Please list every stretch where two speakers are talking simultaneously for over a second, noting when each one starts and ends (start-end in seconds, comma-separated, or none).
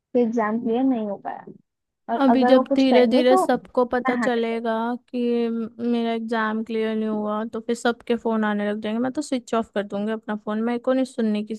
2.2-4.6